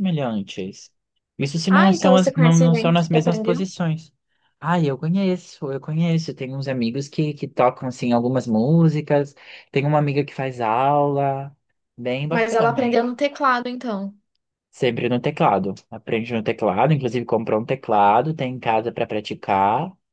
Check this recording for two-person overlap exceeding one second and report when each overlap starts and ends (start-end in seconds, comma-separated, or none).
1.7-3.7